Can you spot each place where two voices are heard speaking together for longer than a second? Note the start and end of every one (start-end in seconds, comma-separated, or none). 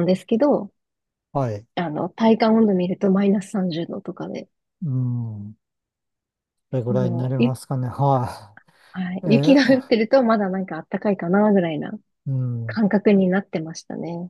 none